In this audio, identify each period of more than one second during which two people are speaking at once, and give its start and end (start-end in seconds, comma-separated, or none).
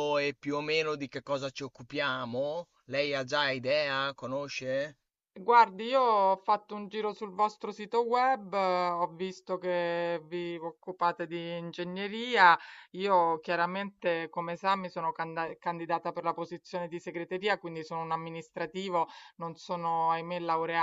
none